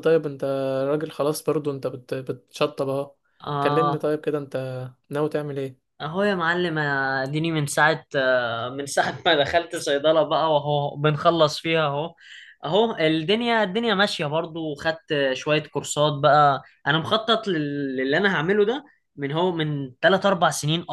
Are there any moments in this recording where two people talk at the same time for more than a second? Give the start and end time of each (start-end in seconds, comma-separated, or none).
none